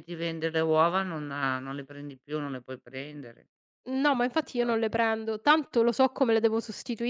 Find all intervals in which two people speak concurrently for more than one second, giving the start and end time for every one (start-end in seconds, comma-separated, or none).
none